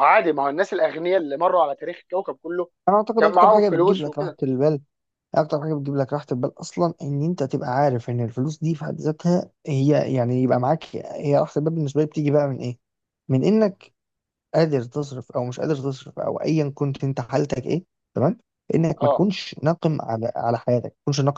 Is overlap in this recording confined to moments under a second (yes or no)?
no